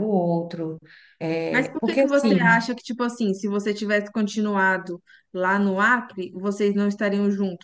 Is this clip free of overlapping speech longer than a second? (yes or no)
no